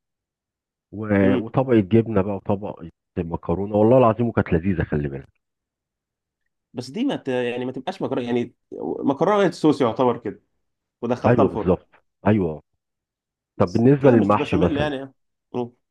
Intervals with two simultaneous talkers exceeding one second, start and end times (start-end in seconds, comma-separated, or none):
13.7-14.9